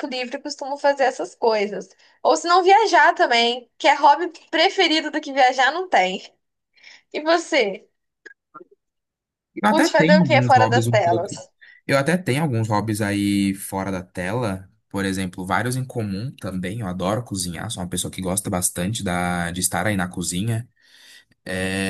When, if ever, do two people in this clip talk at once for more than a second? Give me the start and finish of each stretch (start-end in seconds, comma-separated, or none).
9.7-11.3